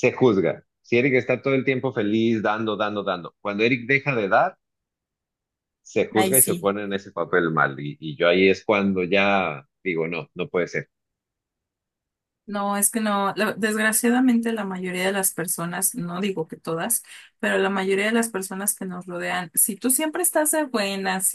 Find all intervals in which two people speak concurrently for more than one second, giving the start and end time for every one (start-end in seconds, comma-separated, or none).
none